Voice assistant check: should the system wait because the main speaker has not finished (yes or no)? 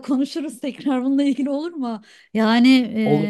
yes